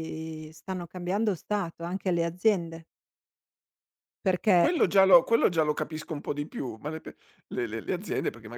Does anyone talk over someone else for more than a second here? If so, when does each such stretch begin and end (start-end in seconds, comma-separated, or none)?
none